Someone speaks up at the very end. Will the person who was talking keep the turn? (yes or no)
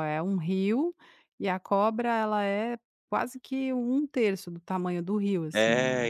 no